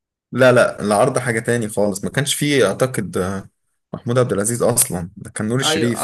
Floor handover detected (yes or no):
yes